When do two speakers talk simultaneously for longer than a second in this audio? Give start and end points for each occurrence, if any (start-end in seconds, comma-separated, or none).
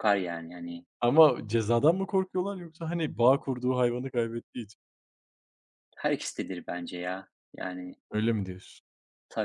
none